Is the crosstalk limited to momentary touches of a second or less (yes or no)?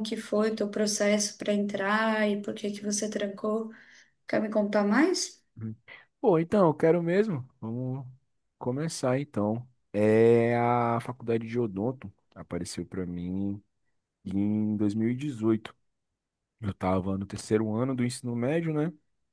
yes